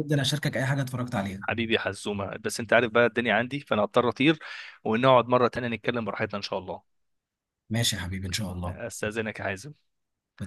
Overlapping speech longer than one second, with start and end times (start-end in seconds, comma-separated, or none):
none